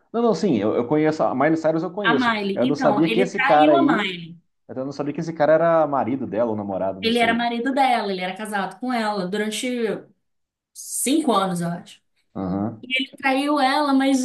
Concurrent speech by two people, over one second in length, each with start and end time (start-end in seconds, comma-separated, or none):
2.0-4.1